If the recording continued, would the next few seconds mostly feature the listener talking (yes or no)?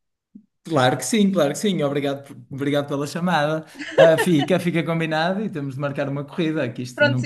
yes